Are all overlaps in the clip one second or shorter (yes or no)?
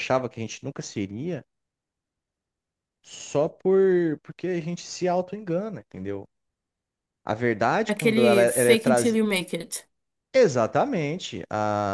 no